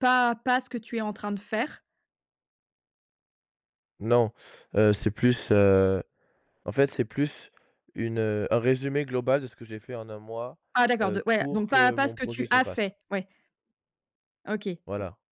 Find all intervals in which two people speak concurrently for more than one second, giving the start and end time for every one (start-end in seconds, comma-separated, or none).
11.0-12.9